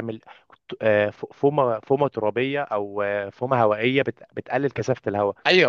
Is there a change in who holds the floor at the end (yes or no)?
yes